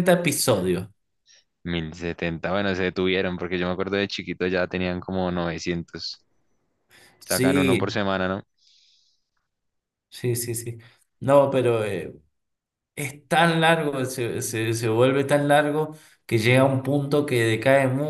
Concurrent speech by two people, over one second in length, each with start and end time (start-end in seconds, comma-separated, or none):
none